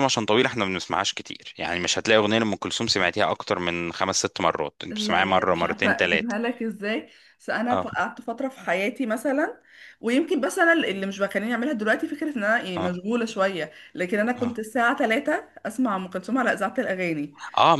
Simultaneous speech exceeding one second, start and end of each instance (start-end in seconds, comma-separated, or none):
4.9-6.4